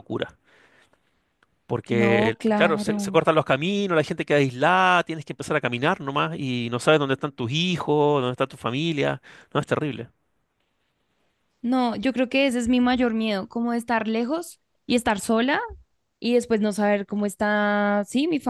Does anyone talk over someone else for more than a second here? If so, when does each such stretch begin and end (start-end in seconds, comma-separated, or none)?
1.9-3.2